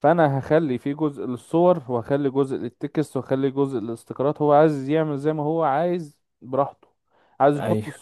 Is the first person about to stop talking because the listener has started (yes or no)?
no